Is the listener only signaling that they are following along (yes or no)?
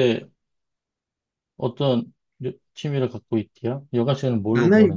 no